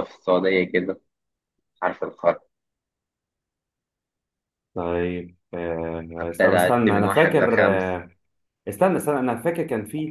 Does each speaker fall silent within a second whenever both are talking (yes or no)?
no